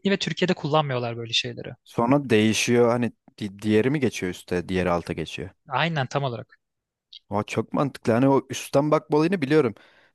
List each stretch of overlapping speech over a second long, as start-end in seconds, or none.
none